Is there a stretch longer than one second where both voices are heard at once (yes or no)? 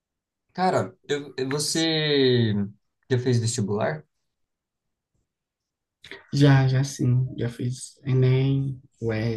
no